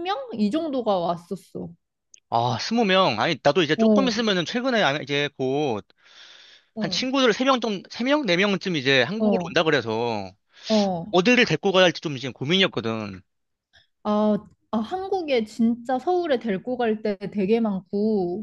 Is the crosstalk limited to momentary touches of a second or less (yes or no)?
yes